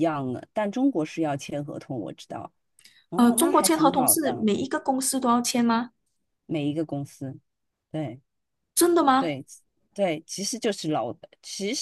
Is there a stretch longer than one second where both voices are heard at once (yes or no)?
yes